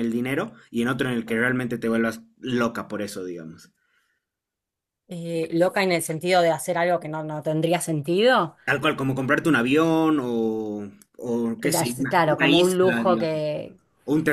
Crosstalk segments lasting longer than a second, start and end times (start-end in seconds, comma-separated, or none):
11.6-13.4